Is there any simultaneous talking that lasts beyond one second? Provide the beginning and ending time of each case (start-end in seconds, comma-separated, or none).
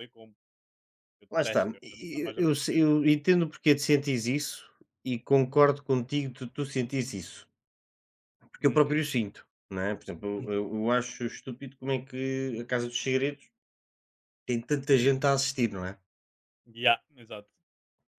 1.3-2.8